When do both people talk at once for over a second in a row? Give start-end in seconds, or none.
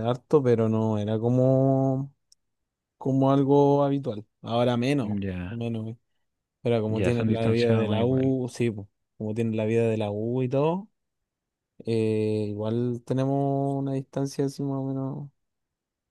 6.9-8.3